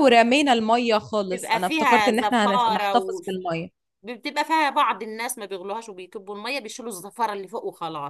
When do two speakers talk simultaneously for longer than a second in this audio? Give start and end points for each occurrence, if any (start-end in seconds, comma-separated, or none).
1.2-3.2